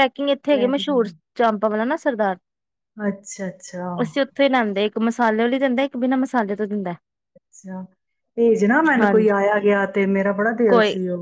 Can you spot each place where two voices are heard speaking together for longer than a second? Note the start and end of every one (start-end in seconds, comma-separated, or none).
none